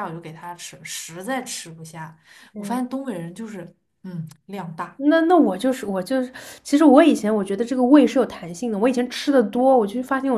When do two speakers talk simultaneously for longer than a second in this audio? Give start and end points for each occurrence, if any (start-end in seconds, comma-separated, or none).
none